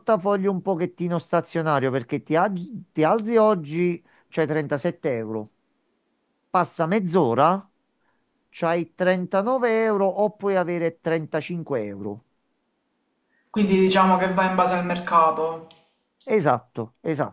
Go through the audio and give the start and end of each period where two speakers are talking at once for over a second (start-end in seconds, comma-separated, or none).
none